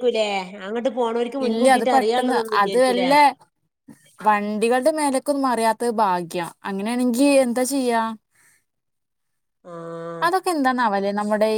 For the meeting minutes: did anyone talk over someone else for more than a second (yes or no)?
yes